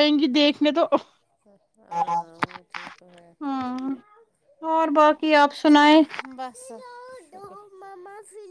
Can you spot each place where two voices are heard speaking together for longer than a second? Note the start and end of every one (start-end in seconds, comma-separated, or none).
none